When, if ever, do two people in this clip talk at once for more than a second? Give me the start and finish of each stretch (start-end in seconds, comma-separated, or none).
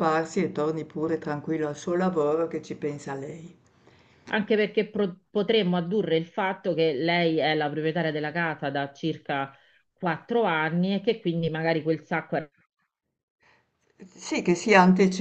none